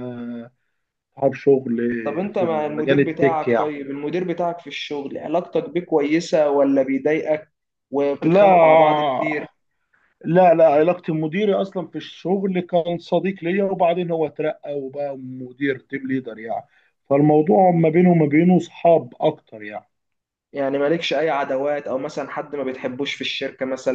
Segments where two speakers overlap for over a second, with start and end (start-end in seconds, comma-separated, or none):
2.3-3.7